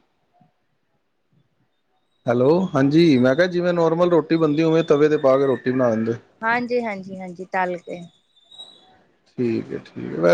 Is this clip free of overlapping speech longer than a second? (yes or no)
yes